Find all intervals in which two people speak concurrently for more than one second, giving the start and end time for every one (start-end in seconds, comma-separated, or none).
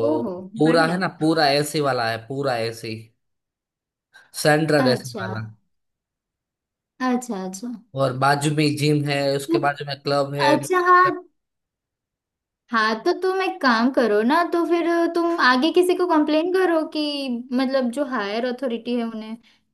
none